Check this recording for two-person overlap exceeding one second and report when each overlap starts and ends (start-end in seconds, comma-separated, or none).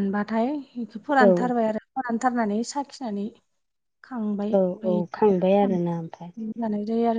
4.5-6.3